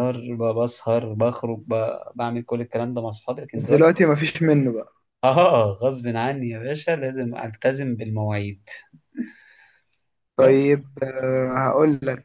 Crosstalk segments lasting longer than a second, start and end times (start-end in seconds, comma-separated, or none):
none